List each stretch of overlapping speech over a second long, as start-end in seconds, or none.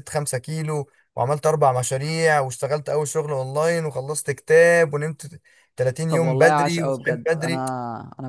6.1-7.7